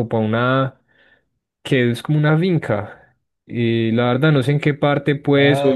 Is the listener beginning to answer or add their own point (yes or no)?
yes